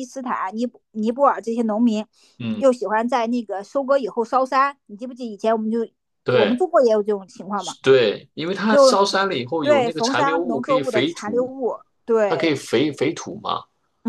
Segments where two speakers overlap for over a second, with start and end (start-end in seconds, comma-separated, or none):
9.6-11.5